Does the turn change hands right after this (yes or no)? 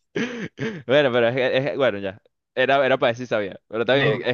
no